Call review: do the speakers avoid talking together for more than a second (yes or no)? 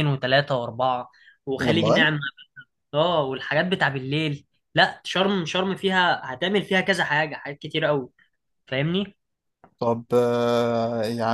yes